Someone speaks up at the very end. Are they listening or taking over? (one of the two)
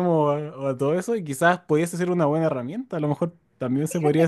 taking over